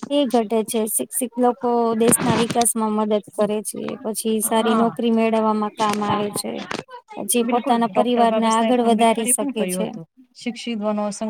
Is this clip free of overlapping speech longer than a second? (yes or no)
no